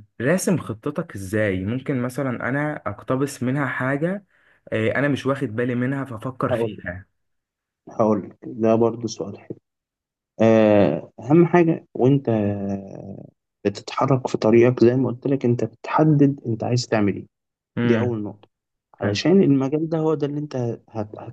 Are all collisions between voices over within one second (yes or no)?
yes